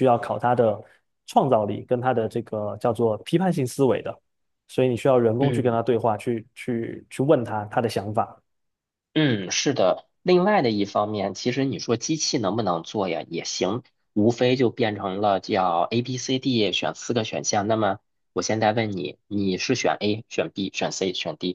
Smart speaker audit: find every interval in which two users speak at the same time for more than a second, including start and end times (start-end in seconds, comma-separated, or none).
none